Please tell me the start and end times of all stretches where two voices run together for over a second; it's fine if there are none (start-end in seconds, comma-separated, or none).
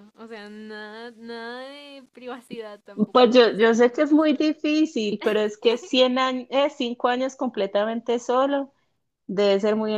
3.1-4.5